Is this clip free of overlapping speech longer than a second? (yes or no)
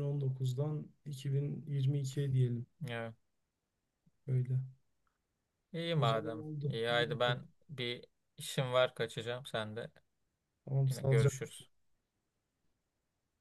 no